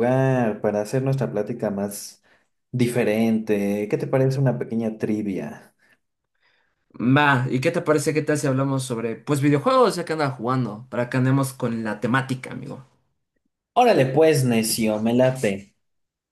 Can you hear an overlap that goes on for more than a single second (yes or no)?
no